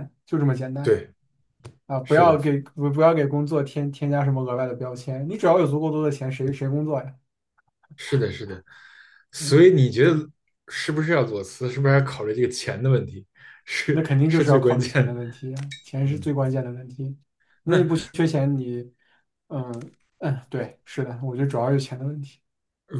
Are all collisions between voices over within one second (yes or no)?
no